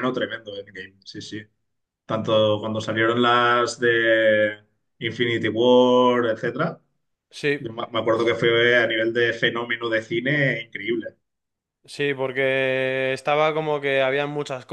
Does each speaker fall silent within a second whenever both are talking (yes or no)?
yes